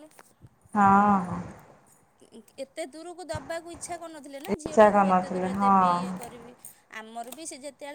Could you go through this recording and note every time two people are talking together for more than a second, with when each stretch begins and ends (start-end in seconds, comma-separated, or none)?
4.5-6.1